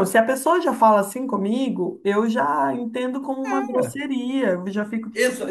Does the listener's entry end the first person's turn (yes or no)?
yes